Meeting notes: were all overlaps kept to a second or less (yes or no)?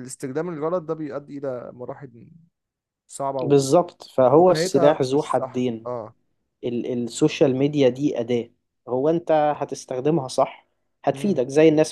no